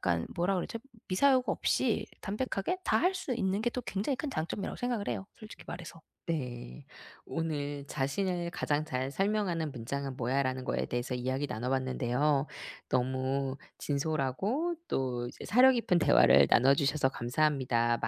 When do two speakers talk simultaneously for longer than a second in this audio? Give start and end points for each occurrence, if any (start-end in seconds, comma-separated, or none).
none